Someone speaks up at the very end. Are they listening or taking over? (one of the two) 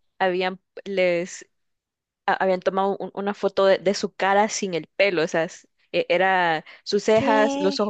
listening